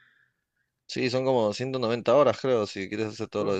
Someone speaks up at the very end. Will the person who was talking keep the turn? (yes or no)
no